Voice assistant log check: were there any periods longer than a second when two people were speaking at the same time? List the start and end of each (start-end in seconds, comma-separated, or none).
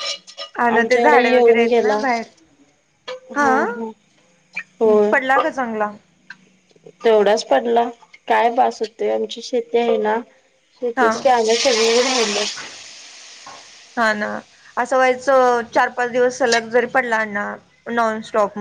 0.7-2.0